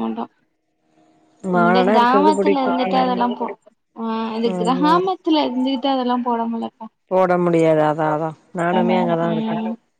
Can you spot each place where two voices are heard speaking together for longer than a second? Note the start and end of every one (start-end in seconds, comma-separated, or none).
1.6-3.2